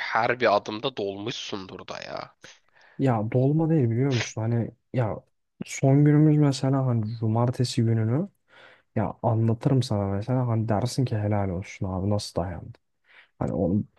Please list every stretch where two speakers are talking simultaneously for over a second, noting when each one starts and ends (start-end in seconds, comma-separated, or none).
none